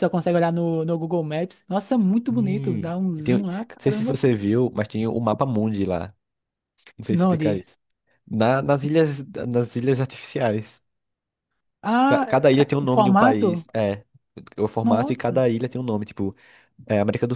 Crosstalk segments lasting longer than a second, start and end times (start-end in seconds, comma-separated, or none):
2.3-4.2, 12.1-13.7